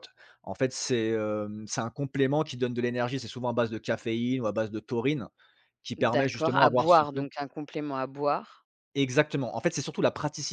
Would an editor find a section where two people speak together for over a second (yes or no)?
yes